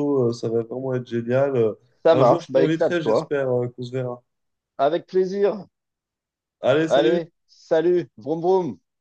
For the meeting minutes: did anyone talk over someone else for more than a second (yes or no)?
yes